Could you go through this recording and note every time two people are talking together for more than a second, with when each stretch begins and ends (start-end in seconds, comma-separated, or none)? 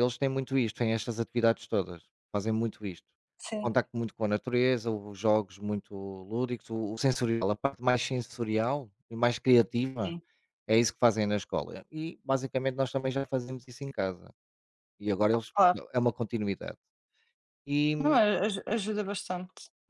none